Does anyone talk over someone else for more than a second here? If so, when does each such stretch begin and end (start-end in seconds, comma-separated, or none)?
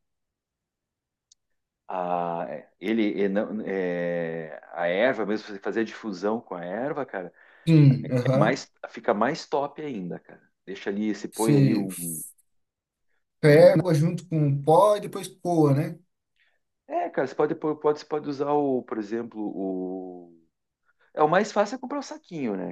none